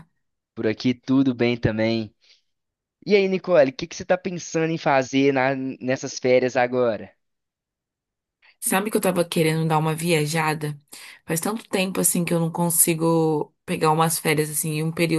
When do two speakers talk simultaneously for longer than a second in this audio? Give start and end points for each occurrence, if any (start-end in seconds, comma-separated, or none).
none